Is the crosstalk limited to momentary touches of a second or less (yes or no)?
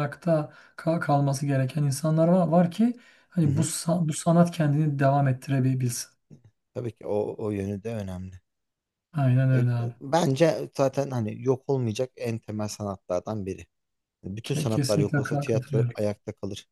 no